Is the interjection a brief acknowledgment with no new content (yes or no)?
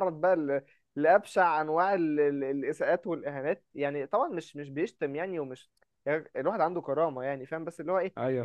yes